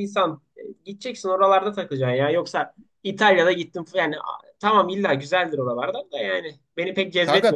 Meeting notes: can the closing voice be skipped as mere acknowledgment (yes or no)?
no